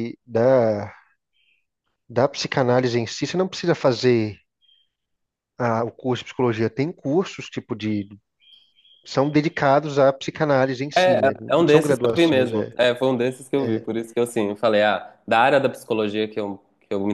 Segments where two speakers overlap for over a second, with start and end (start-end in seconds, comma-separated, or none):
10.9-12.7